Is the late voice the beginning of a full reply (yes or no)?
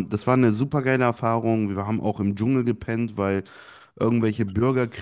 no